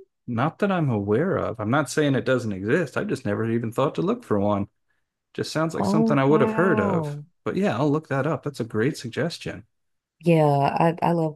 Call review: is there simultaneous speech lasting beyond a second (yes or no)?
yes